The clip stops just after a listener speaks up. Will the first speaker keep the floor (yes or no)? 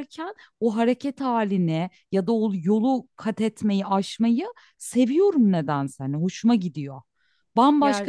yes